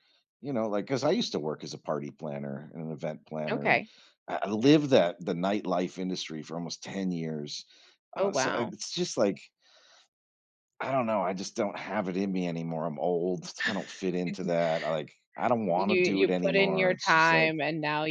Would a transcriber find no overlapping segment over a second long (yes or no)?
no